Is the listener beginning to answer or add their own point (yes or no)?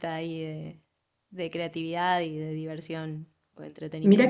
yes